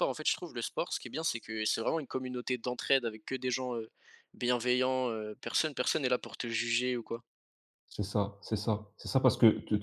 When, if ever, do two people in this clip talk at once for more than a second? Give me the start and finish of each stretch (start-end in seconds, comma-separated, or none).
none